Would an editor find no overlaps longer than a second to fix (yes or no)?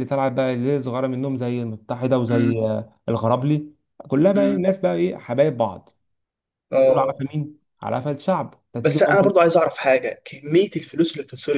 yes